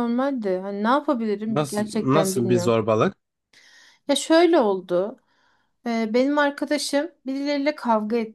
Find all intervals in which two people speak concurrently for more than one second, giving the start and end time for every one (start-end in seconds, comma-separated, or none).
1.5-2.8